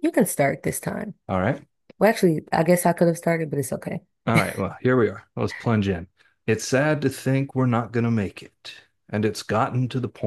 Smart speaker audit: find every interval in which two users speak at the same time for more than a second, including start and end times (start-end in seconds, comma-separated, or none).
none